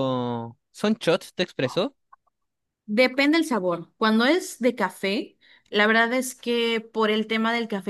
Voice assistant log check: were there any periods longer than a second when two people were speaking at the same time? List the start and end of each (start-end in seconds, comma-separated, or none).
none